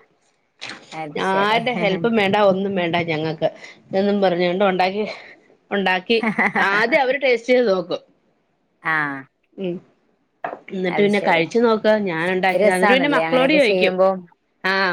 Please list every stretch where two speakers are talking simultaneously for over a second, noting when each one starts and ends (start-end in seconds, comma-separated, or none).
12.6-13.9